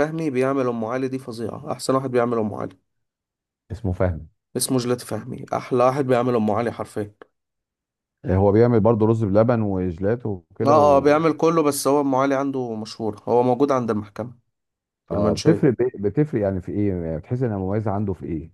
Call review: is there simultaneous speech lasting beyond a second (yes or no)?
no